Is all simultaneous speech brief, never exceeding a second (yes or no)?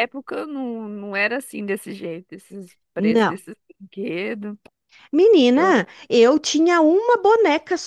yes